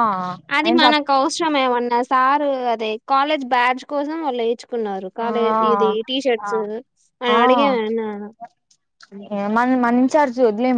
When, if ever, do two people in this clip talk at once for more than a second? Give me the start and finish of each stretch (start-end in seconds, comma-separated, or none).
none